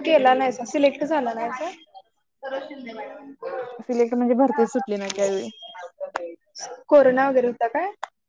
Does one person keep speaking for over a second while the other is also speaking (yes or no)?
no